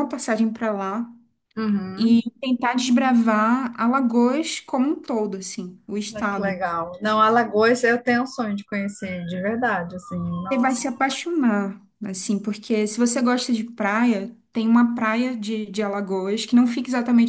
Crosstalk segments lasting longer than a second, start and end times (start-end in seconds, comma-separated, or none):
none